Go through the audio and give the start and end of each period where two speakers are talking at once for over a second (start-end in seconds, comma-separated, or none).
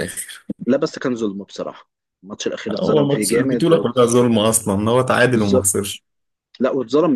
2.8-4.2